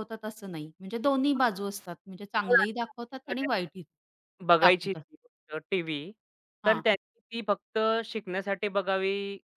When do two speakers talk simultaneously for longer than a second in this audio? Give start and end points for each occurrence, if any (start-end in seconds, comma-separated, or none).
2.4-3.8